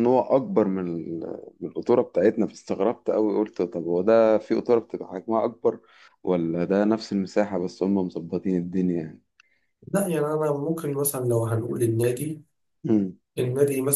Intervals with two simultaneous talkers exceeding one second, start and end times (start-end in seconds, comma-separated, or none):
none